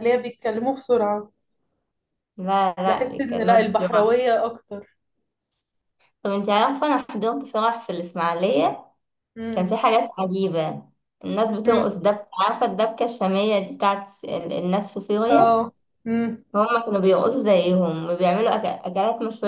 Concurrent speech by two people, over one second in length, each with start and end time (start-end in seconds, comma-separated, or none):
2.8-4.2